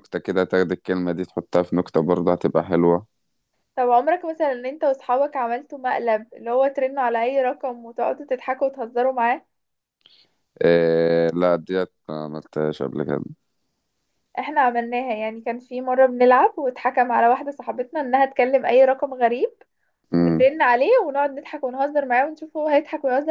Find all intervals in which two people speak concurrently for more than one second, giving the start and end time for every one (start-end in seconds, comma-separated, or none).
none